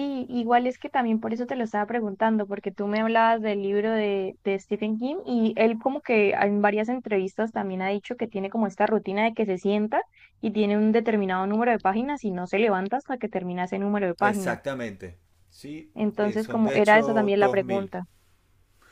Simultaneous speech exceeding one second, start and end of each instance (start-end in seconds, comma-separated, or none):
15.9-17.9